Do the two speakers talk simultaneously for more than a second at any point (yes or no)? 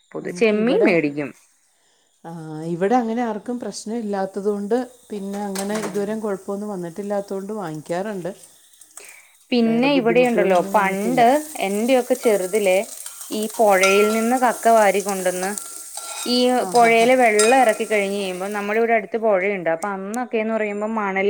yes